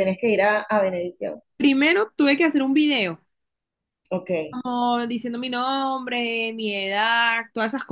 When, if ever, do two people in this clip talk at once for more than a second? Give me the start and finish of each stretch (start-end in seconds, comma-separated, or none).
none